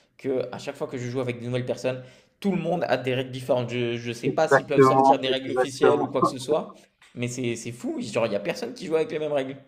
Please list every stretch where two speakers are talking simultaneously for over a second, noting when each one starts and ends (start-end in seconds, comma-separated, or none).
4.2-6.1